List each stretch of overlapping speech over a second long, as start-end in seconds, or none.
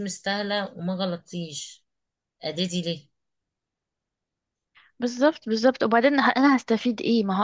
none